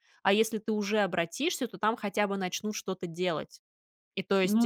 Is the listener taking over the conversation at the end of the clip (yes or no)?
no